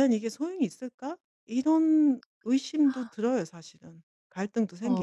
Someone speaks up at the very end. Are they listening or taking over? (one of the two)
taking over